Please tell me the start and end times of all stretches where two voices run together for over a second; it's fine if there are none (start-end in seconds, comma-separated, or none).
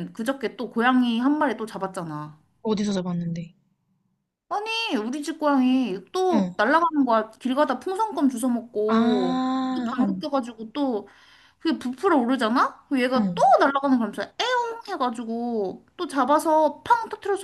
8.9-10.2